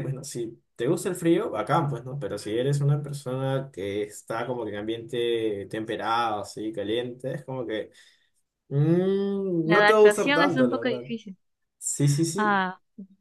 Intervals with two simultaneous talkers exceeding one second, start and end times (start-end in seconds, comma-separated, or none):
9.6-11.0